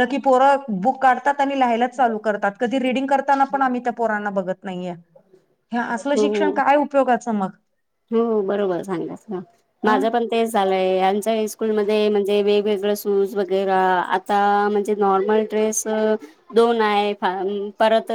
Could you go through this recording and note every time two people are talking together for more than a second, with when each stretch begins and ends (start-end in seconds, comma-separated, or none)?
none